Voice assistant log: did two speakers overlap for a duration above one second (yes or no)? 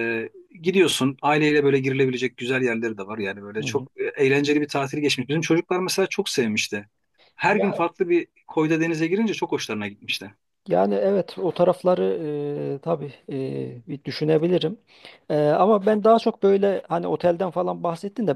no